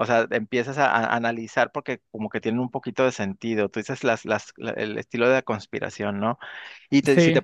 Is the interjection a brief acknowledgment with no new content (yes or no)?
yes